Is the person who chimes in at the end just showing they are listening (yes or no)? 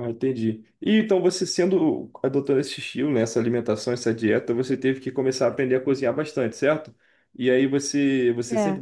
yes